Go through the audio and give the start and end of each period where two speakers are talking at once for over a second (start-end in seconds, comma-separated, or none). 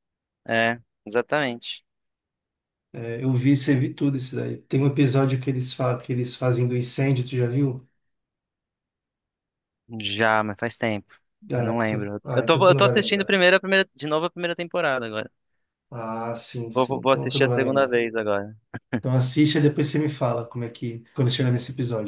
11.6-13.3, 16.7-18.0